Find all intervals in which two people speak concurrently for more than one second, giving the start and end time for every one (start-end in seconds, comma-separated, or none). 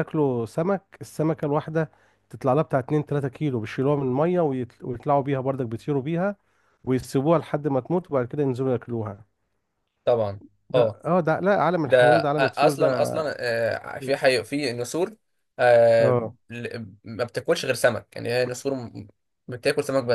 11.9-13.2